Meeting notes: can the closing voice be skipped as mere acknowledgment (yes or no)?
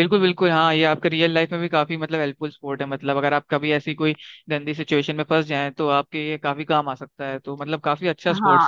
no